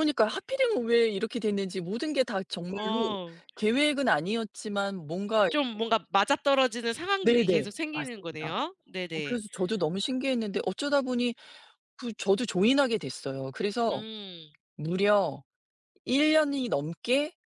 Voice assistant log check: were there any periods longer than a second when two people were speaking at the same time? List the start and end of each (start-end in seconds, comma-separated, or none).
7.2-8.5